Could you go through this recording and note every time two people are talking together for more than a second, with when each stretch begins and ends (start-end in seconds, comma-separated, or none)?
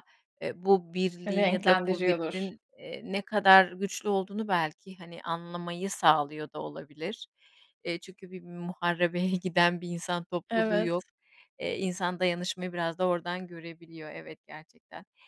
1.3-2.5